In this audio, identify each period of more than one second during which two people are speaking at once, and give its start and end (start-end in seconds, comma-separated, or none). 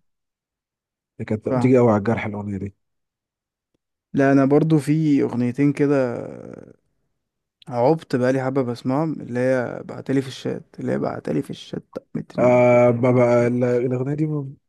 none